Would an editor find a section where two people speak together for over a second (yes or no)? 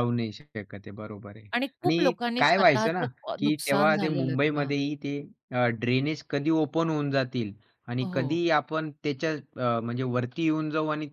yes